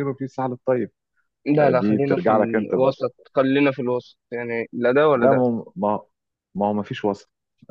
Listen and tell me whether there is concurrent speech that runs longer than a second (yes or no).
yes